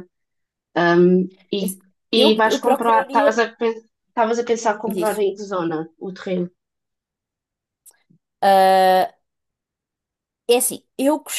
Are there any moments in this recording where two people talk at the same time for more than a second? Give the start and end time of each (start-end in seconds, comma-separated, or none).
1.6-3.4